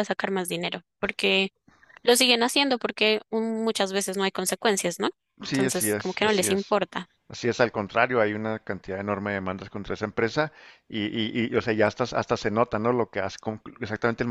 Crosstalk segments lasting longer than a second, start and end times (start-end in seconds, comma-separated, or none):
5.4-6.7